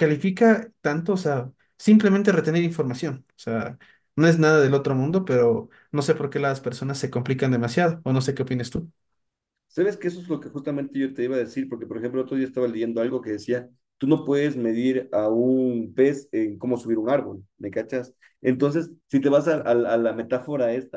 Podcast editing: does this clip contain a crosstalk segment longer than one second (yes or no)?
no